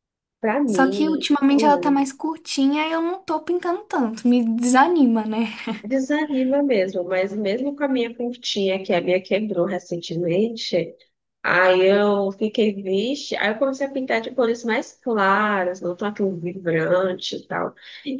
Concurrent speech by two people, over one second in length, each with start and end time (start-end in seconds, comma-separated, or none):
0.7-1.9